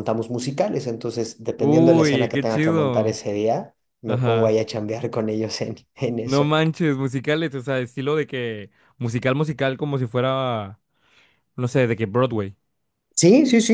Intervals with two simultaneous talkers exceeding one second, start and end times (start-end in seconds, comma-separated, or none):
1.6-3.2